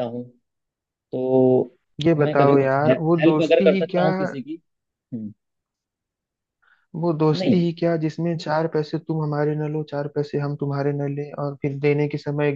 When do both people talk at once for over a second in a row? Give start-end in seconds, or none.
2.2-4.1